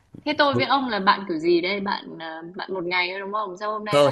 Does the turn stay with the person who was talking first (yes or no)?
no